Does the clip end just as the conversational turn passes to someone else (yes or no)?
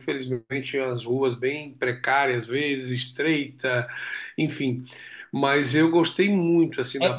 yes